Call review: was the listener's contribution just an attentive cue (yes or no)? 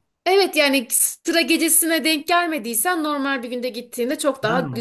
yes